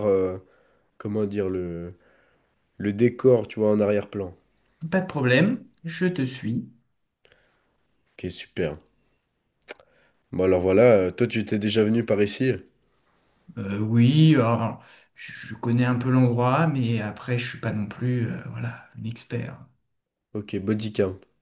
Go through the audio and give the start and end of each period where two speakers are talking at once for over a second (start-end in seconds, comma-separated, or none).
none